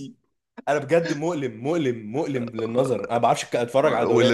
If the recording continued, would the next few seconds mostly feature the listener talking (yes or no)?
yes